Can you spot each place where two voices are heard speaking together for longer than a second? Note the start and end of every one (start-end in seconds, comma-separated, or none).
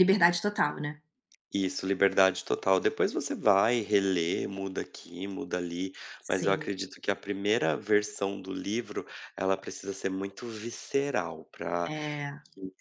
none